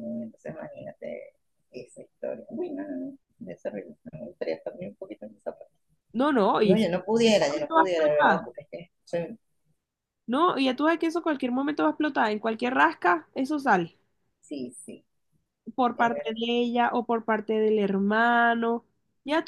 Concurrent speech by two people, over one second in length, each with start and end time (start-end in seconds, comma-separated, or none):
6.6-8.5